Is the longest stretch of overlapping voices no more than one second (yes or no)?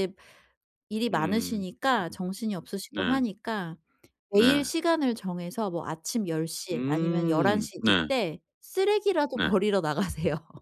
no